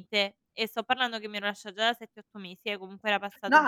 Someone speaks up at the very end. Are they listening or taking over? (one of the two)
taking over